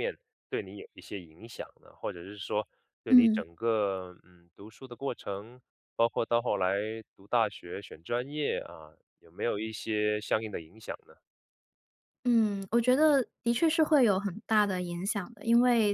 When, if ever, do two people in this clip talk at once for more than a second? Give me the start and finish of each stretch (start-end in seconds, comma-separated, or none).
none